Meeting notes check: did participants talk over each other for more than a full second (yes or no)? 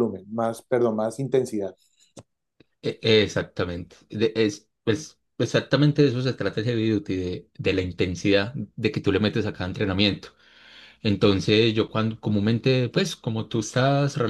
no